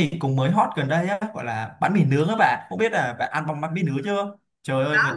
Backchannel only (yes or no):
yes